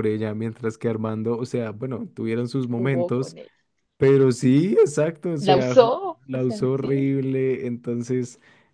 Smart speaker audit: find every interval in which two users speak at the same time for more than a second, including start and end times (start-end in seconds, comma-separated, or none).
5.4-7.1